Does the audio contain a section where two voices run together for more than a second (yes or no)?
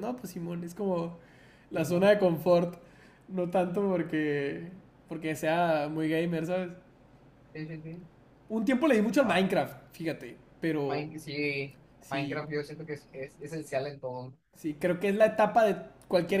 no